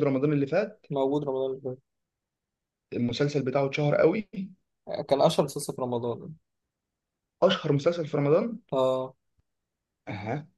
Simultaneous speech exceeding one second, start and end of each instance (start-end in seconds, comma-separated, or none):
none